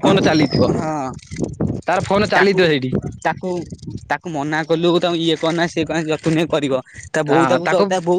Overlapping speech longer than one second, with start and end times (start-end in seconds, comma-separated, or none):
none